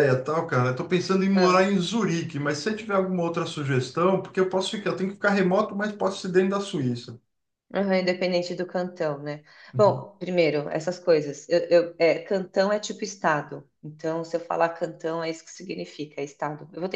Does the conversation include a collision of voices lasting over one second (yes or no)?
no